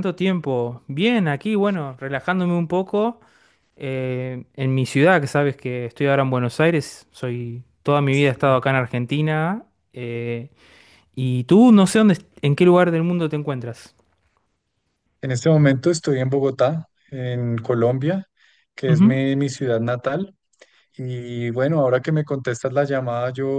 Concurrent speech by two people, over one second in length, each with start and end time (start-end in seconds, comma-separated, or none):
none